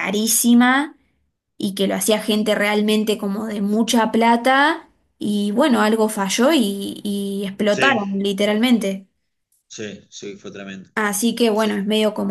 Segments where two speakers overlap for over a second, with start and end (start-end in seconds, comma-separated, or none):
none